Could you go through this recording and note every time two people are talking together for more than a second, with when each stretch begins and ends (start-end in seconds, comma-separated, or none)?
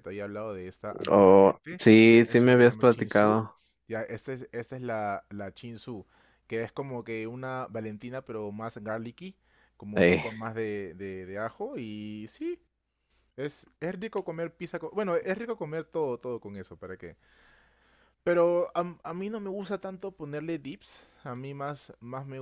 1.1-3.4